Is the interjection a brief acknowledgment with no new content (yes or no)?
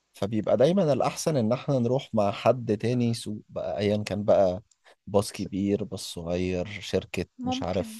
yes